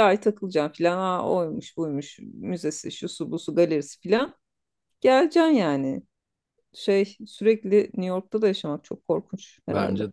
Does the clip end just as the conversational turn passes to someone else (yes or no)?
yes